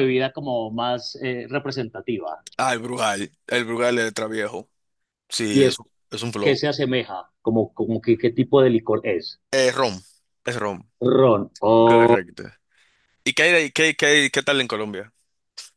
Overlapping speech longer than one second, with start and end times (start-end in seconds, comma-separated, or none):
none